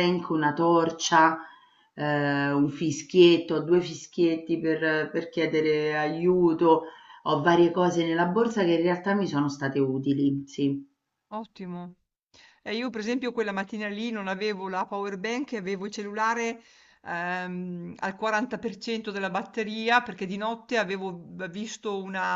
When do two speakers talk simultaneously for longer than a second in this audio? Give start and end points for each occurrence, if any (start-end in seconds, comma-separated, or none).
none